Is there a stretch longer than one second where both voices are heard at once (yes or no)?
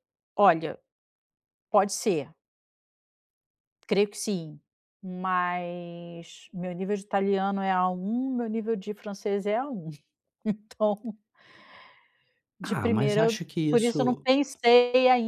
yes